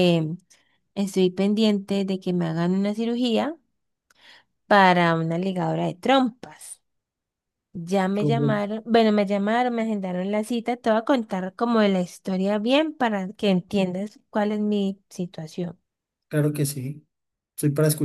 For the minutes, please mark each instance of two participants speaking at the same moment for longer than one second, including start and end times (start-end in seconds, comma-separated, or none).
none